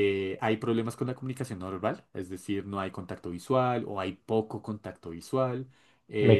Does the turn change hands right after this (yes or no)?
yes